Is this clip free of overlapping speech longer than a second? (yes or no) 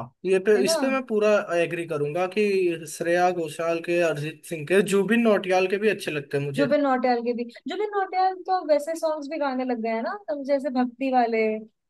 yes